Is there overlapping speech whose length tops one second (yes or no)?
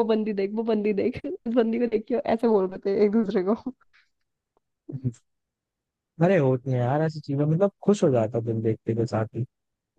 no